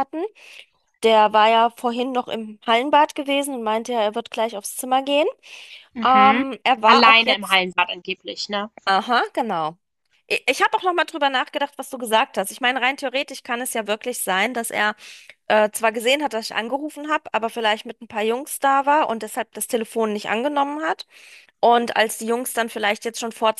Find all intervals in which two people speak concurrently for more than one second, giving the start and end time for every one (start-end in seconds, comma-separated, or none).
6.0-7.6